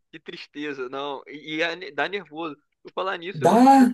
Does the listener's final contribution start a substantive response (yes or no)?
no